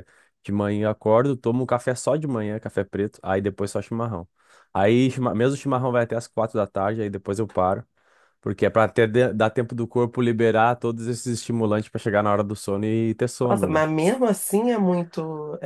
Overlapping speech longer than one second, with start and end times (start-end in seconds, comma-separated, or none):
none